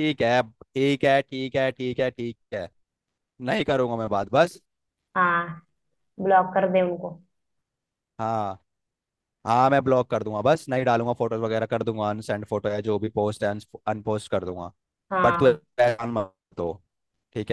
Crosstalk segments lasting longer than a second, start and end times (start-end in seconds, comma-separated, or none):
none